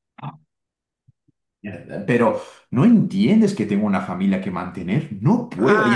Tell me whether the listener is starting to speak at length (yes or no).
yes